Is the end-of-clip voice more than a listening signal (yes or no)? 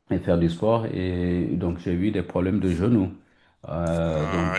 yes